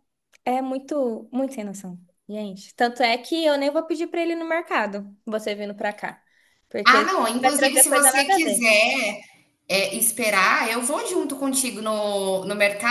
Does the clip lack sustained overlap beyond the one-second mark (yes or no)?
no